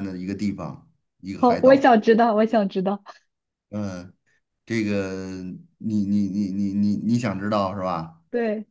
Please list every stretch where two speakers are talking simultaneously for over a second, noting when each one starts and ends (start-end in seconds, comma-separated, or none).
none